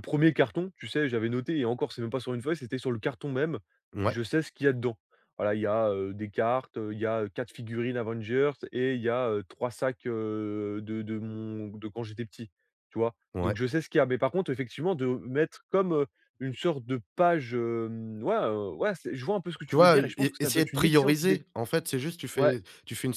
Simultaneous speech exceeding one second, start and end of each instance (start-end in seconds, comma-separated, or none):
19.7-21.4